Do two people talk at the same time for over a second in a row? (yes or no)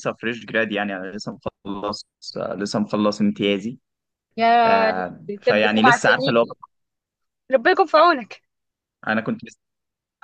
yes